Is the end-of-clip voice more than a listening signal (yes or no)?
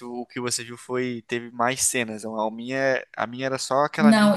yes